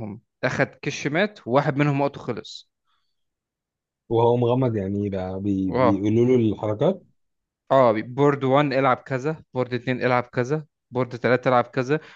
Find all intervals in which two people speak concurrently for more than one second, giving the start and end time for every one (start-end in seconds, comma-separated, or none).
none